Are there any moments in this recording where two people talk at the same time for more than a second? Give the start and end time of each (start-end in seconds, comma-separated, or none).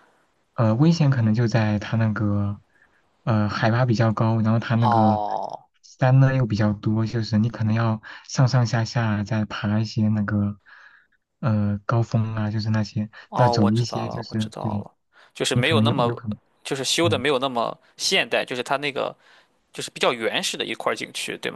13.3-14.8